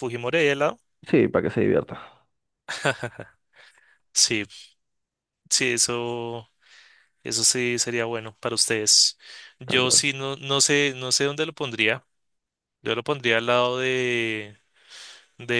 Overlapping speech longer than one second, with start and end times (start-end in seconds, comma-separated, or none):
none